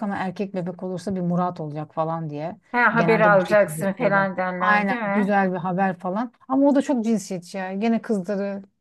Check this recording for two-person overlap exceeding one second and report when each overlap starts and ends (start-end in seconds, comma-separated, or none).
2.9-5.4